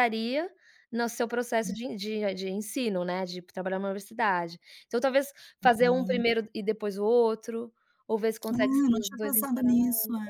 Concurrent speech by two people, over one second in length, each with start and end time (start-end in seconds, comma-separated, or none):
8.5-9.8